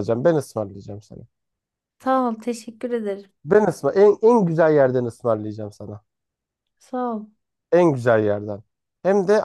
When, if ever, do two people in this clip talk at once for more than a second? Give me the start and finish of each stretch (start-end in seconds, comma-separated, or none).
none